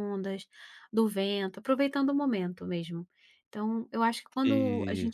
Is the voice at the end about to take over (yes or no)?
no